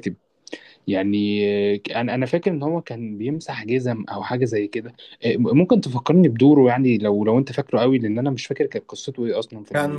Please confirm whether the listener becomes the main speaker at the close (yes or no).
yes